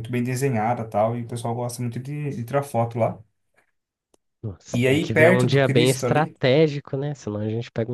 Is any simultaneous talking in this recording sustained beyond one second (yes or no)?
yes